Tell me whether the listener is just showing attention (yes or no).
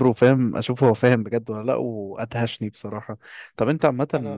yes